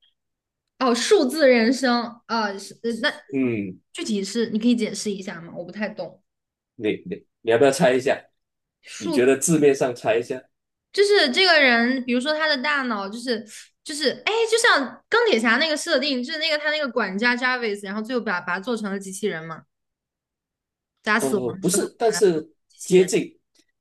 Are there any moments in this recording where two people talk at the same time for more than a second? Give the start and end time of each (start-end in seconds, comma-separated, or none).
21.2-23.1